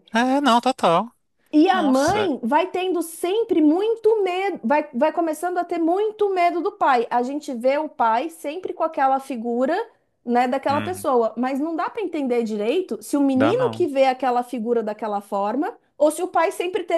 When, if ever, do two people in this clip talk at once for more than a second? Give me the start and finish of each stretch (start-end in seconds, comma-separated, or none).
none